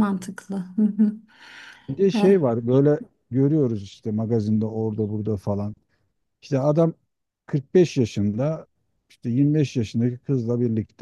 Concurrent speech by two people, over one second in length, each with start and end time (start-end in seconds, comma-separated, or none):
none